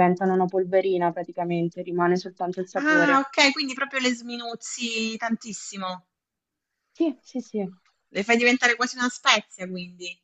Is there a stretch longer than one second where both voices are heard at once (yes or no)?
no